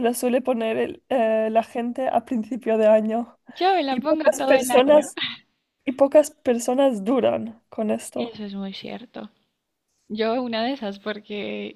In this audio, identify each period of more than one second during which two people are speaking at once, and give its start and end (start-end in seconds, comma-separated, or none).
3.9-5.1